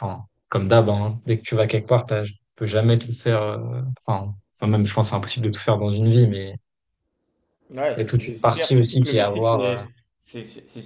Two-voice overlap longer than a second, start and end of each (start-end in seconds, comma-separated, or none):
8.0-9.8